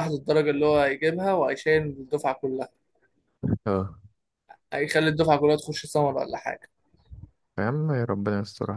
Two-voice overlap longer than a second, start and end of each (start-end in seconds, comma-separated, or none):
none